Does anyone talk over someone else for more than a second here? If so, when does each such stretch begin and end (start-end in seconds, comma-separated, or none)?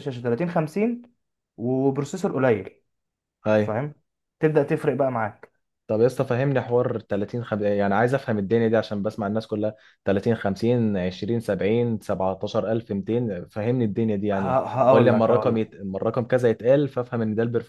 14.3-15.6